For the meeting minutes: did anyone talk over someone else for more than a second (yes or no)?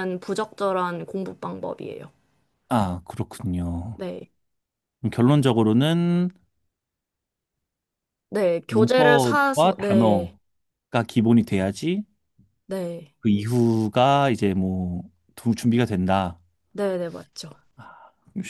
yes